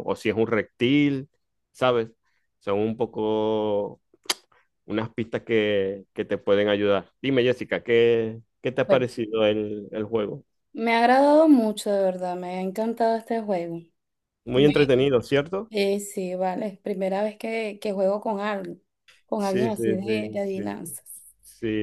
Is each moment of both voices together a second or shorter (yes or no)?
no